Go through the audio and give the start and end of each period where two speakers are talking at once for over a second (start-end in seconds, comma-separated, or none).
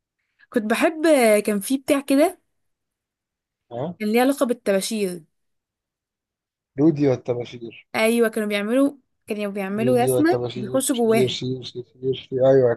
9.8-11.4